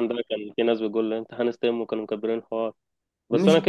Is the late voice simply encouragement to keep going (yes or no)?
yes